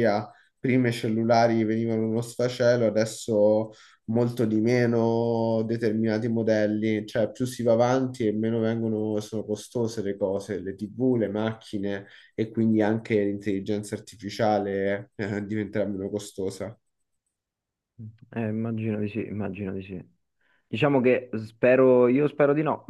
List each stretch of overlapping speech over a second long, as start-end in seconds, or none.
none